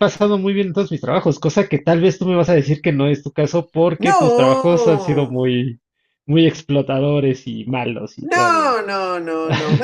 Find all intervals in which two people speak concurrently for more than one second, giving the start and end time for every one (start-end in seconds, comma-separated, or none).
4.0-5.4